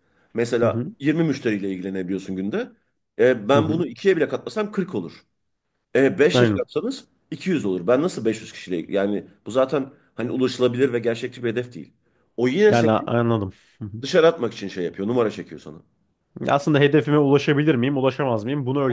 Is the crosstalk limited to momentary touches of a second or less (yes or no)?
yes